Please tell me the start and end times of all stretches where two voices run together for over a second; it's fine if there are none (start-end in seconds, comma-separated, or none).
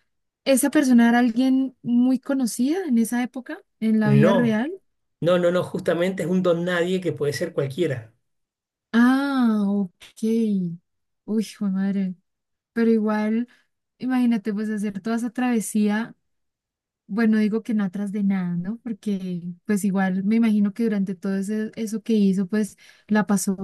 none